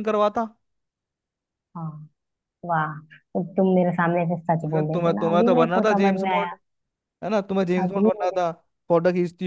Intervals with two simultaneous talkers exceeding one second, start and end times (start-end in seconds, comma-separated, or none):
4.6-6.5